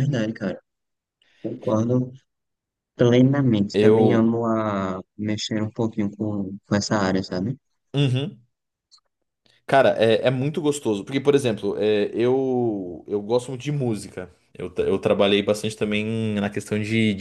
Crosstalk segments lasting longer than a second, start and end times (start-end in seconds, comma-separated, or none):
none